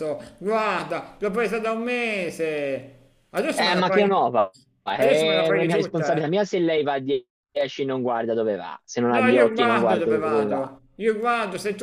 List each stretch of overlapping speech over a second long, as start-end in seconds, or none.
5.0-6.3, 9.1-10.8